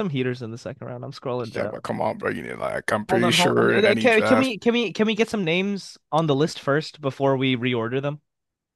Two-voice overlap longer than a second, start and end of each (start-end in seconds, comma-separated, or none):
3.1-4.5